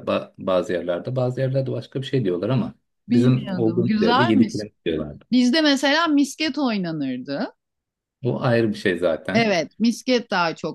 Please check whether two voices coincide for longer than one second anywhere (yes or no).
yes